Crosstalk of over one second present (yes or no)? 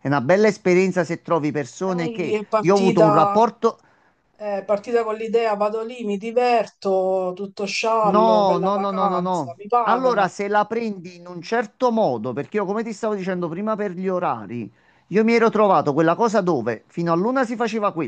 yes